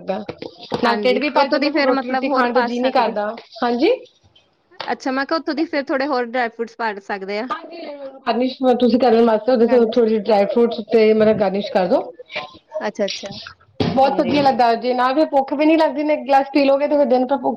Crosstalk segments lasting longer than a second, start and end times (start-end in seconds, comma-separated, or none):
0.8-3.1